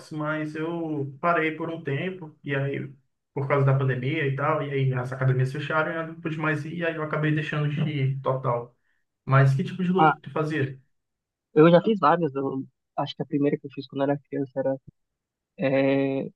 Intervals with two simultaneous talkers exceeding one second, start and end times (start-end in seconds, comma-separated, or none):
none